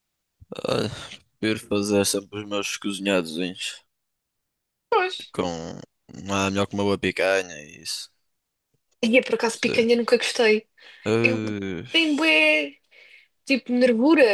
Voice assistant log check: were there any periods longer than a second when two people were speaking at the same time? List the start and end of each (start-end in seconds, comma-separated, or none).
none